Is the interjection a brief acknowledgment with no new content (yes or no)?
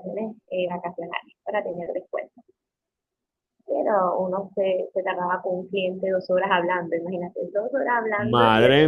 no